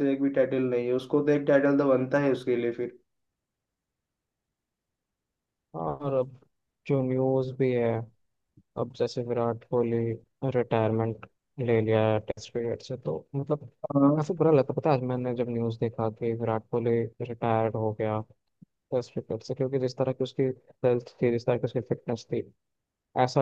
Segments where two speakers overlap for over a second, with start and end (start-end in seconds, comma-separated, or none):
none